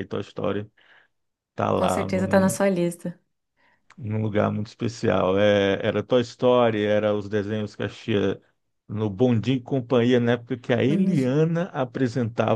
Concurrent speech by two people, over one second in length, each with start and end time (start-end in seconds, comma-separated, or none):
none